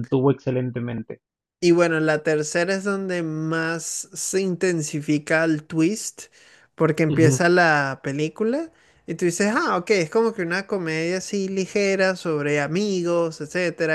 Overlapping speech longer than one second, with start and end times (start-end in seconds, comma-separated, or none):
none